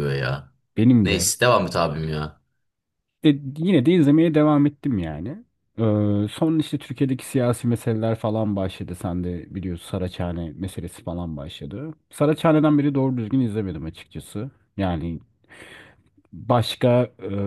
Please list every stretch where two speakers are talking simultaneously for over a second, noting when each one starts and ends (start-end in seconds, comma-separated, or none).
none